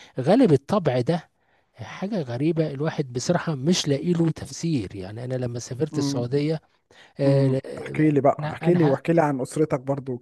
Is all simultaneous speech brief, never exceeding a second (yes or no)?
no